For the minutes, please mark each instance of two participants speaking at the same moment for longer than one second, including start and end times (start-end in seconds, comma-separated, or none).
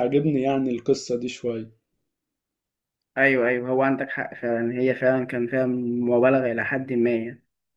none